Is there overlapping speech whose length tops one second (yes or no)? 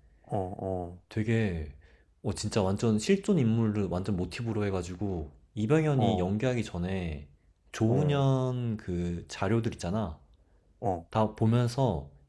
no